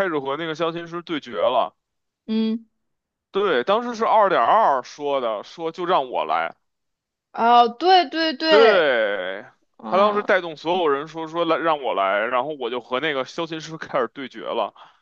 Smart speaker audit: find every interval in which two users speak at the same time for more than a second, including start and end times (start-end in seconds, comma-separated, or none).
none